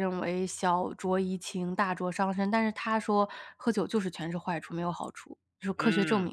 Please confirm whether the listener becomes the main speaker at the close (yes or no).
yes